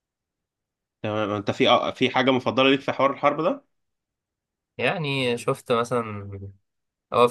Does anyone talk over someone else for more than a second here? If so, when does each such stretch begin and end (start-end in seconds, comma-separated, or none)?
none